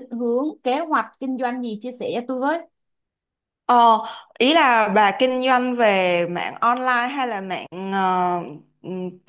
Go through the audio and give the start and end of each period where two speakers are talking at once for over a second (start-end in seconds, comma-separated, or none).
none